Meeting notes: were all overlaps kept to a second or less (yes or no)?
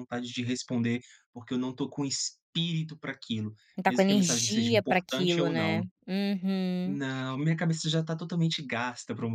no